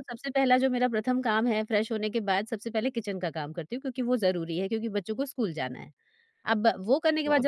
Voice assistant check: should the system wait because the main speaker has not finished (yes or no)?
yes